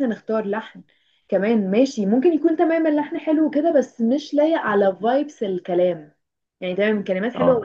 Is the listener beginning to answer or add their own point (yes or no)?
no